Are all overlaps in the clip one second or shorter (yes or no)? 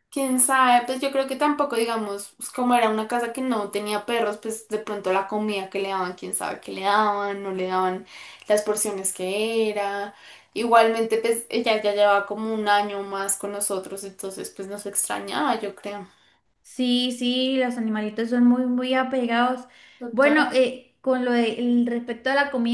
yes